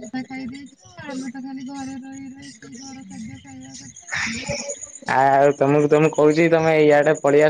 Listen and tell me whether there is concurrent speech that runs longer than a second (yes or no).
no